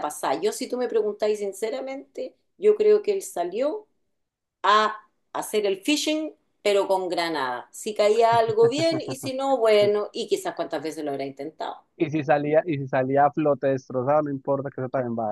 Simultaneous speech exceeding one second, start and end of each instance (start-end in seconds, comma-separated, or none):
none